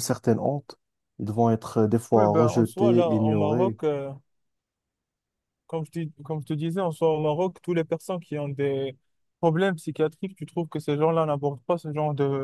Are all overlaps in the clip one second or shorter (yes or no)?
no